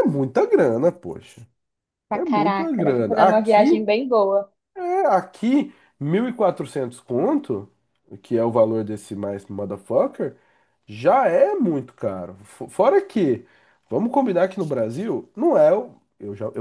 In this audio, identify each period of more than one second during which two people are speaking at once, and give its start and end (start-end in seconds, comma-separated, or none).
2.1-3.9